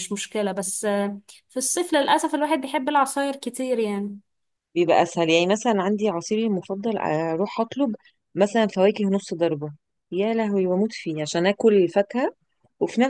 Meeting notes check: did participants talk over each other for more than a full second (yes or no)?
no